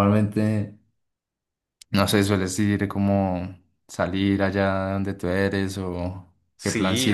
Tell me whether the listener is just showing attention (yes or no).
no